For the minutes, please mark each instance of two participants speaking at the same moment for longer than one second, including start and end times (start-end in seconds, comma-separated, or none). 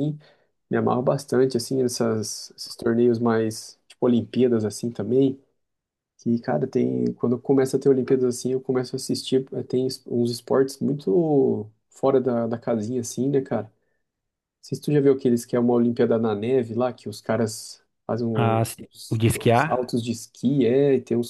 18.3-20.0